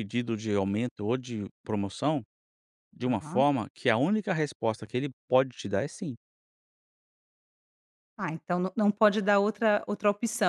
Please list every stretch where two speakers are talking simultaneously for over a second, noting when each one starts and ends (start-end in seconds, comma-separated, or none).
none